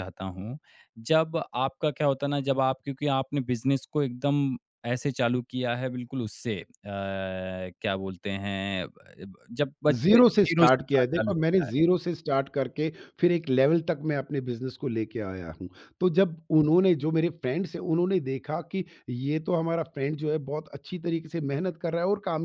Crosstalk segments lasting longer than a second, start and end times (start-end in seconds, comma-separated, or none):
9.9-11.7